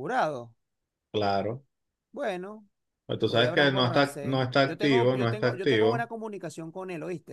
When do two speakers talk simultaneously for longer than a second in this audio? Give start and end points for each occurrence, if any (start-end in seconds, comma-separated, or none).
3.2-6.1